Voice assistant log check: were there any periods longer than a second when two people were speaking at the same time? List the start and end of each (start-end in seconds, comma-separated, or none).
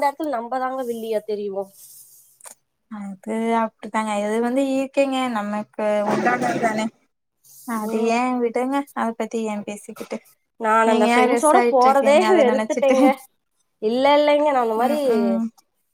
10.9-12.9